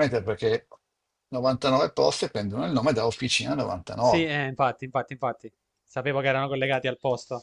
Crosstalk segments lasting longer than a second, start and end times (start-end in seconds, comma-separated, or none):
none